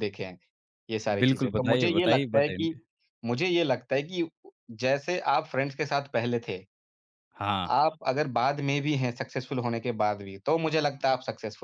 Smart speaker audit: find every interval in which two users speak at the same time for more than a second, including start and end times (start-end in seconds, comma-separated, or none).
1.2-2.7